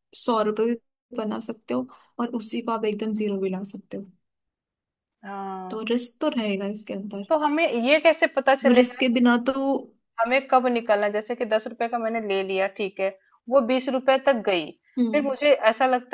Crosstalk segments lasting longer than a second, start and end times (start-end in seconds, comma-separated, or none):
none